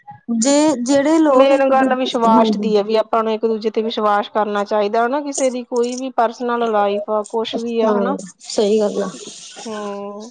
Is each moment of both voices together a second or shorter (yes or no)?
yes